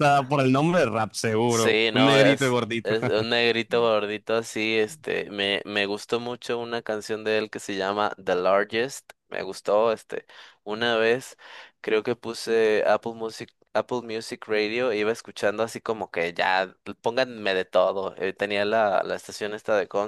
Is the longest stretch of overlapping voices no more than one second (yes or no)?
no